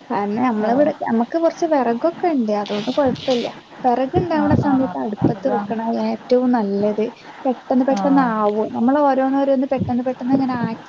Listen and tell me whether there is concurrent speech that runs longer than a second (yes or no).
yes